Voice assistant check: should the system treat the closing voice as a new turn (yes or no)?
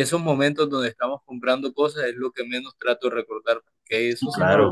yes